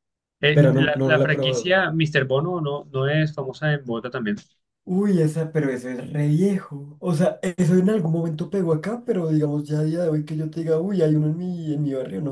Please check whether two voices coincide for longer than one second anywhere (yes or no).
yes